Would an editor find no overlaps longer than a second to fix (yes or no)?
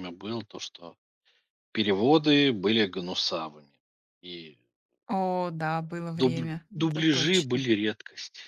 no